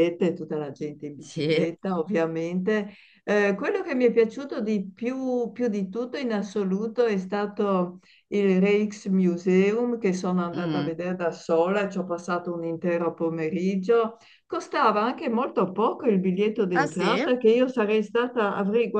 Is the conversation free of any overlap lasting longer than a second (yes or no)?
yes